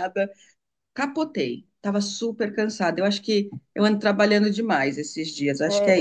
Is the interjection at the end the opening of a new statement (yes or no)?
yes